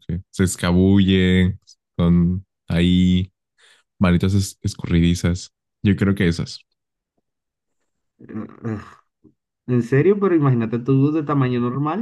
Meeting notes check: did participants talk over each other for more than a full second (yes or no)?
no